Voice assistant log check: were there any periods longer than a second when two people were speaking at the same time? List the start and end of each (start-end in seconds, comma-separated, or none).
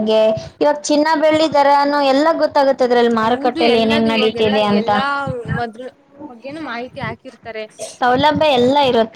3.2-4.9